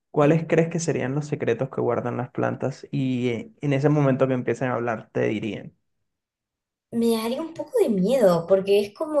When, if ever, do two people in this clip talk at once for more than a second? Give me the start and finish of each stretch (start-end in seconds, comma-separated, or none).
none